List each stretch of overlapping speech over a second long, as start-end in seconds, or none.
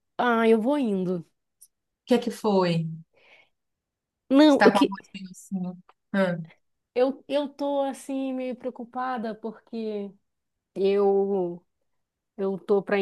none